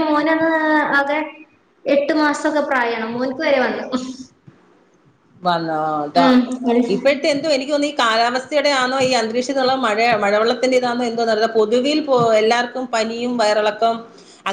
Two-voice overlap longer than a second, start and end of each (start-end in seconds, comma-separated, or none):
none